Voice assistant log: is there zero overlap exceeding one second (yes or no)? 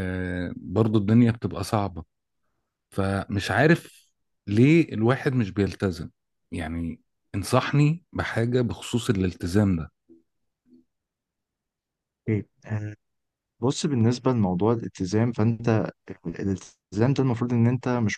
yes